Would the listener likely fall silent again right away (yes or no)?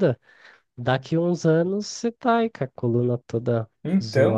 yes